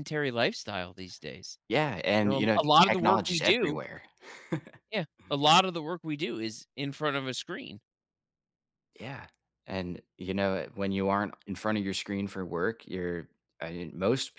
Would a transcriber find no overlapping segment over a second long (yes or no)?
no